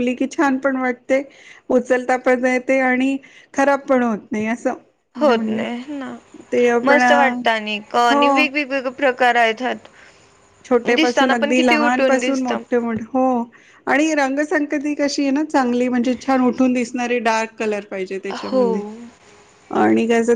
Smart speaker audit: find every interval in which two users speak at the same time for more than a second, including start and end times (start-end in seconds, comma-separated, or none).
none